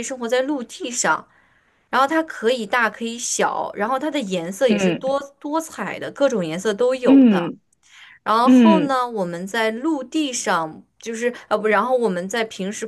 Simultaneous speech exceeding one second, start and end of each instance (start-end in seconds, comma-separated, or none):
none